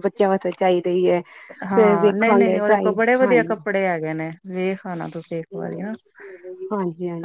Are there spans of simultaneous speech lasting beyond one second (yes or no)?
yes